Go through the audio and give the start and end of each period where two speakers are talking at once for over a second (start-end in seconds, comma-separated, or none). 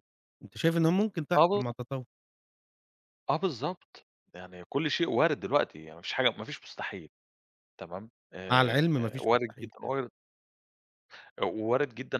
8.5-9.9